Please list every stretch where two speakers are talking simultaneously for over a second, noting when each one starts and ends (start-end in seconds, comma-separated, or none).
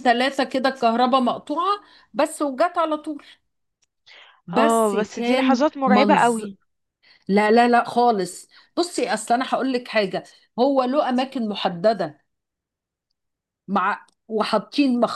4.5-6.5